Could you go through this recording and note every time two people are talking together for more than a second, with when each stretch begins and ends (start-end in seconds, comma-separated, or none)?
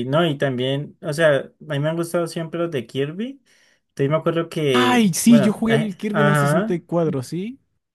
4.7-6.8